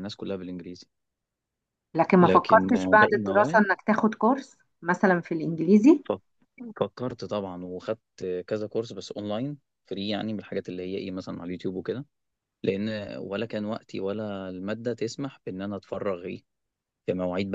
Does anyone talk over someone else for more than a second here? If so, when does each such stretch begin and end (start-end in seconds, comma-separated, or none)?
2.2-3.6